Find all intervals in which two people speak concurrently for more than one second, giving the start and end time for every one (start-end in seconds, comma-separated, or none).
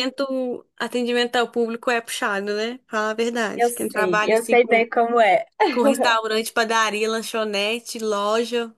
3.5-4.8